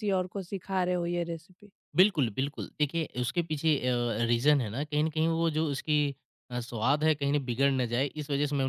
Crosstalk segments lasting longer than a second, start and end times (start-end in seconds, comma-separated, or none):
none